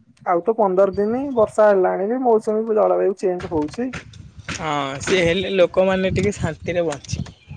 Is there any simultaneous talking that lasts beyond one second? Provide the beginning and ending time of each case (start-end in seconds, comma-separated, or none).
none